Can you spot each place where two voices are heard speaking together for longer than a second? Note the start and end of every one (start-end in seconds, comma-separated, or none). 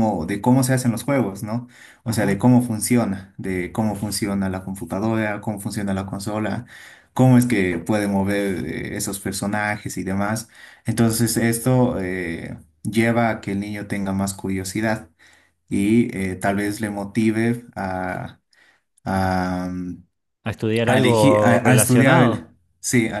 20.8-22.4